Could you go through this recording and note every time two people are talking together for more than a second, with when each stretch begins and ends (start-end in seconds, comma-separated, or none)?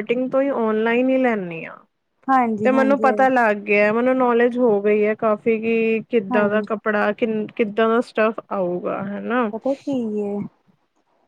none